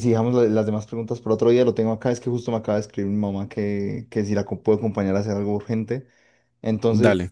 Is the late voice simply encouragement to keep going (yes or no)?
yes